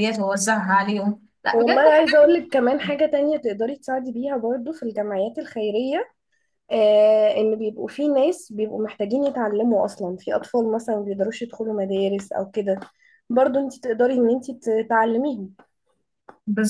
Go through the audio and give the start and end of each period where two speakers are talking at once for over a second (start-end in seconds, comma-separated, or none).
none